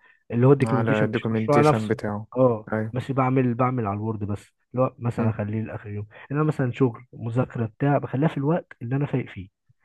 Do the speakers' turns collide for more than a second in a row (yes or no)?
yes